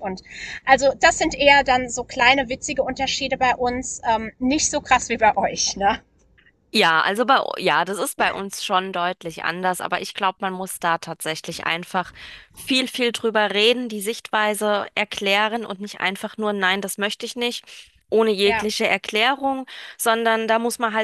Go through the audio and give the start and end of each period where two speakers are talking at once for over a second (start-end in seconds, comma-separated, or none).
none